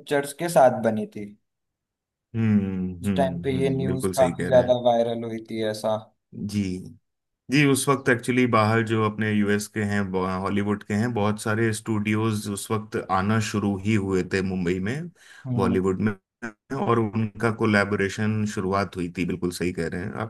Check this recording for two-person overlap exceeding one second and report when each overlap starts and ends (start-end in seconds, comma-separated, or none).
3.0-4.8